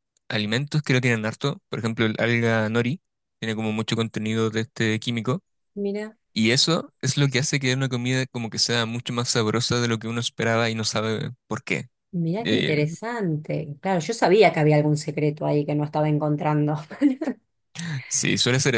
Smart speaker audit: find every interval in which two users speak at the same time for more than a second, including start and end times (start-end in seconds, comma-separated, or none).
none